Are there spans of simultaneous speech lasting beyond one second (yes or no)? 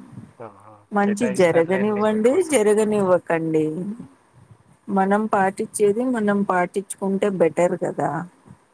yes